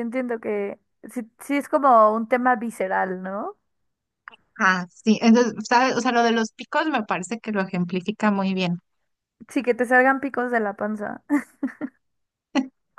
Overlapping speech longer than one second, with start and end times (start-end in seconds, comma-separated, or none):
none